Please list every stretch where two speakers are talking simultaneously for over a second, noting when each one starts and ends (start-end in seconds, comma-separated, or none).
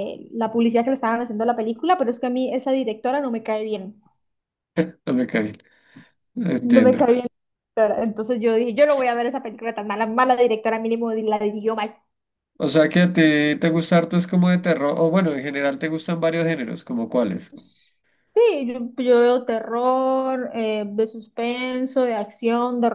none